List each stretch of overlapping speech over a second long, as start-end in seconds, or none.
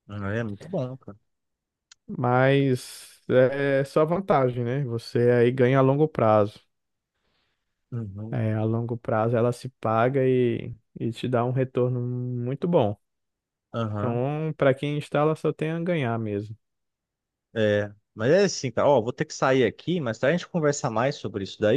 none